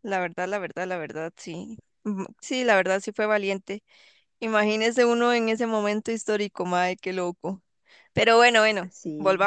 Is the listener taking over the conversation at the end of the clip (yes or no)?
no